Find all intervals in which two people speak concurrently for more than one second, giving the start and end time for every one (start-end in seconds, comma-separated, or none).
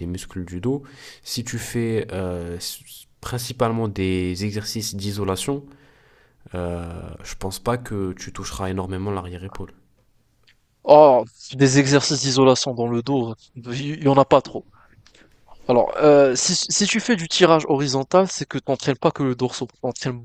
none